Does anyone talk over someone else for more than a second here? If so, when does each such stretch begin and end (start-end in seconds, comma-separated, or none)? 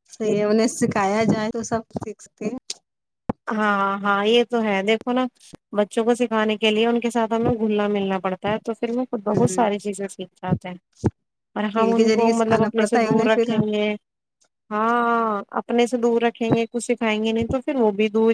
11.7-13.6